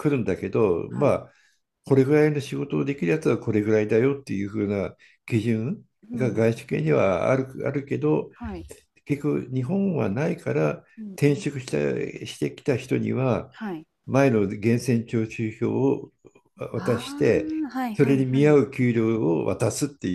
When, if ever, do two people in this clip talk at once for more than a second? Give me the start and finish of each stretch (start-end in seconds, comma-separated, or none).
16.7-18.6